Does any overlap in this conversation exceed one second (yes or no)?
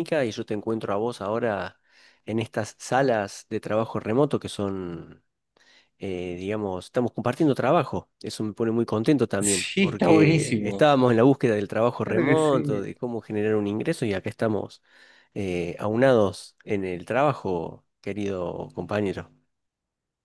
yes